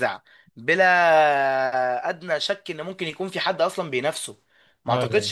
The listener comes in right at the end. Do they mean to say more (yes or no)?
no